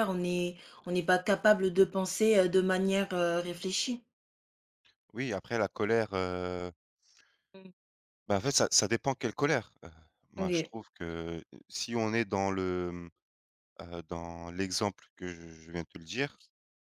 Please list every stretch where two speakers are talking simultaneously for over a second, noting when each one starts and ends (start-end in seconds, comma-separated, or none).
none